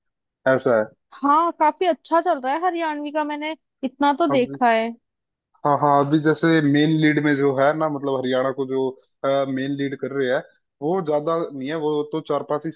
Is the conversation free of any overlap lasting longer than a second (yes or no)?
yes